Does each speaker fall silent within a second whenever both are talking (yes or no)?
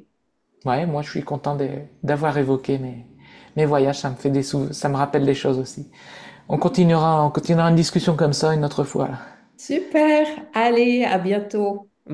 yes